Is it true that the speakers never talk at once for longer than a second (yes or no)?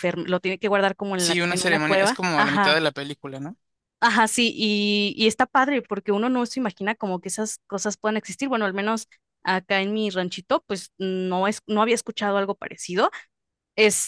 no